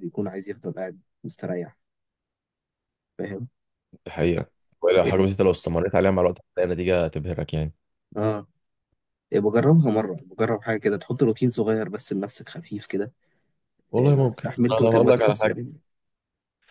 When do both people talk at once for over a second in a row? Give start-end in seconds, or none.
14.0-15.5